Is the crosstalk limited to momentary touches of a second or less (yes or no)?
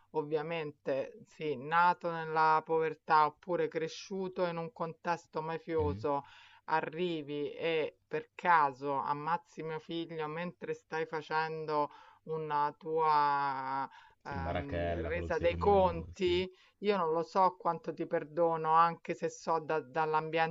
no